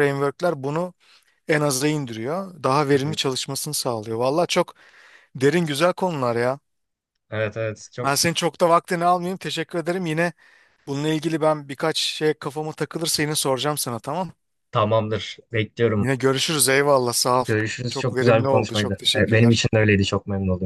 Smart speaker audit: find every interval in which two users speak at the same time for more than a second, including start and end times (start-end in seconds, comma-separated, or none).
17.9-19.6